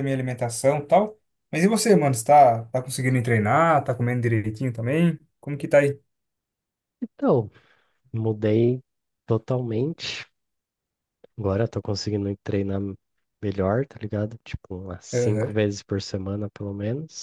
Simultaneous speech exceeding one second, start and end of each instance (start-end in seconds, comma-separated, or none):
none